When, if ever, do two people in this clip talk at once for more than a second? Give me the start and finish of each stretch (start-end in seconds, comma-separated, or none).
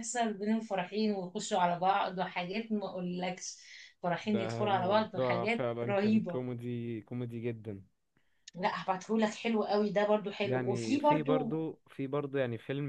4.2-6.4, 10.4-11.6